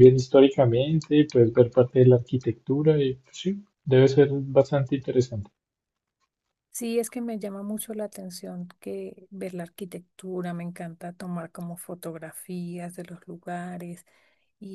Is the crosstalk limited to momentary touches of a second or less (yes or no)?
yes